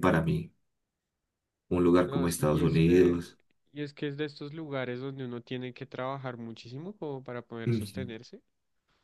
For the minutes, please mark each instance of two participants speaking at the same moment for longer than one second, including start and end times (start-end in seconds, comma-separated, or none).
2.0-3.2